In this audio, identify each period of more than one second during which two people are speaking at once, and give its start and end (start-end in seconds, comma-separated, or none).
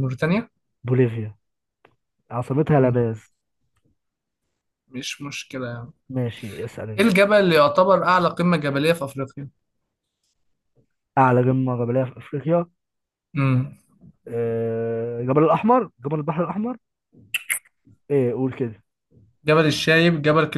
none